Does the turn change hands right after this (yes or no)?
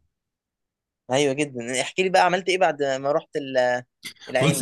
yes